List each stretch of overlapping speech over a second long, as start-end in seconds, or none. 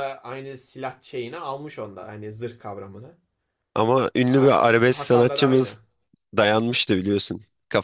4.3-5.8